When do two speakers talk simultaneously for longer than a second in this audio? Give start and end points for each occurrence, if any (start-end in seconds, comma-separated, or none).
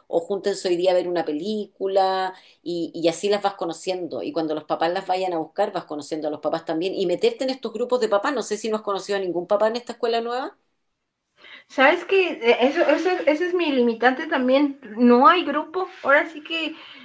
none